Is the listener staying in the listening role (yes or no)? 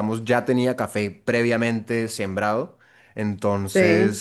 yes